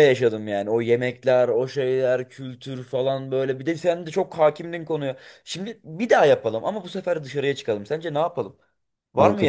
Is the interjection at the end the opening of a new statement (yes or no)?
yes